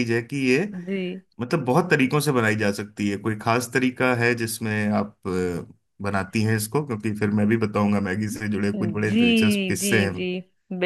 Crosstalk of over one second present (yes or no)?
yes